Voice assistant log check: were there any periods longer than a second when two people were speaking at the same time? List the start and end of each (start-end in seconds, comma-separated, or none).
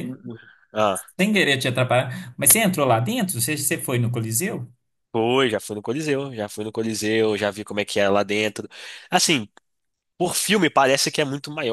none